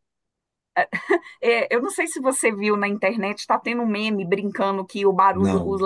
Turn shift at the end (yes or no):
no